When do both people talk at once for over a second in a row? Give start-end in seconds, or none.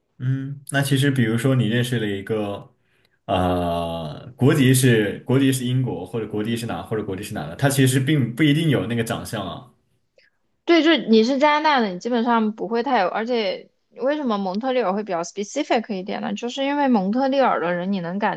none